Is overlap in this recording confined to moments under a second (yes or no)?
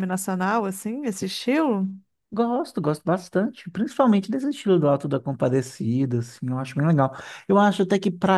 yes